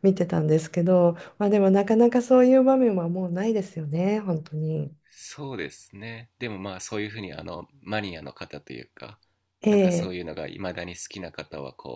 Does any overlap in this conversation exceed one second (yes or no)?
no